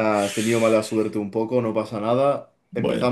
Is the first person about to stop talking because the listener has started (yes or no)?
no